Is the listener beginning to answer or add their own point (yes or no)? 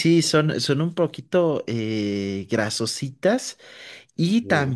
no